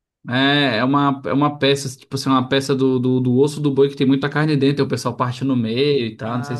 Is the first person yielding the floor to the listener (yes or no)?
yes